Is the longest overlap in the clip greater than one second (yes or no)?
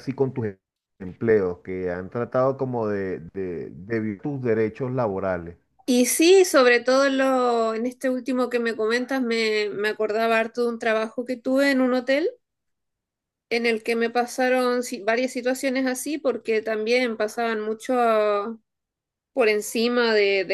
no